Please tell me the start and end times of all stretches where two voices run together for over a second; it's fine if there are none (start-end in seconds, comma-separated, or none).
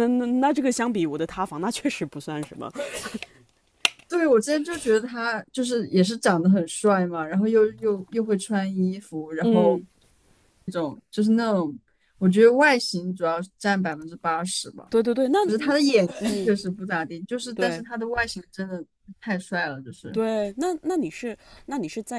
none